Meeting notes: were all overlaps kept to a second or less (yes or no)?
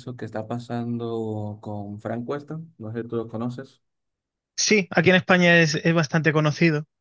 yes